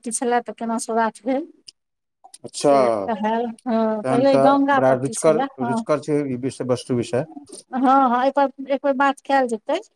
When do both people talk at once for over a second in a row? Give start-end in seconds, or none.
2.6-5.8